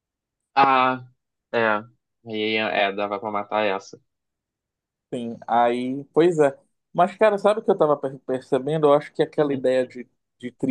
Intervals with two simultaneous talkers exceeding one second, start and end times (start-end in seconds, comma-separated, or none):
none